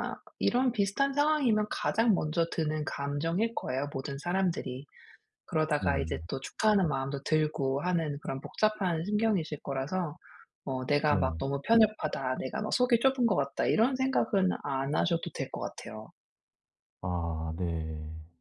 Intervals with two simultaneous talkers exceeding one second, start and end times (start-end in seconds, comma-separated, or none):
none